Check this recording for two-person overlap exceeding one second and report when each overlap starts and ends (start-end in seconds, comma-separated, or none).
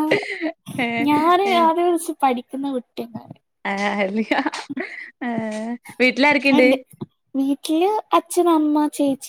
none